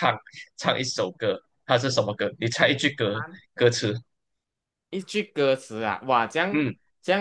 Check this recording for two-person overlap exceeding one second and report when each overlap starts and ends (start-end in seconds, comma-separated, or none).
none